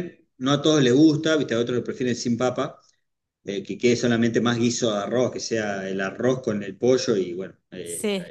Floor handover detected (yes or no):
no